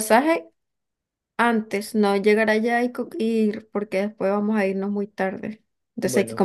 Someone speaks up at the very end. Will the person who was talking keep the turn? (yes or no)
yes